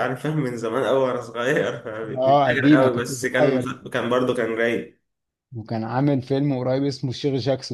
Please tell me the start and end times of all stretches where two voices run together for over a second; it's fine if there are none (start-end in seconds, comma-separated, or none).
2.1-3.8